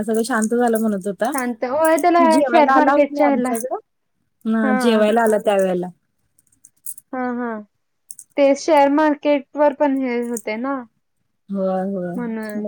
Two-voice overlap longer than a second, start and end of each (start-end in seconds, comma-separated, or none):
1.3-3.5